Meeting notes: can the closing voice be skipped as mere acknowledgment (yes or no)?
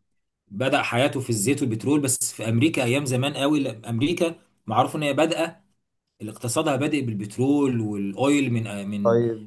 yes